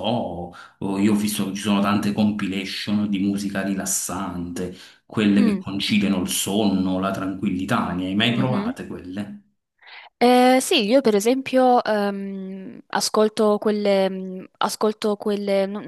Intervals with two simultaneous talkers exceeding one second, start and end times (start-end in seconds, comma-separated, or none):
none